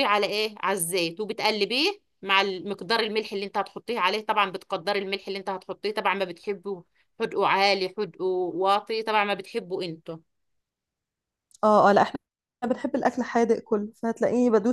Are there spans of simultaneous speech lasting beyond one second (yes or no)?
no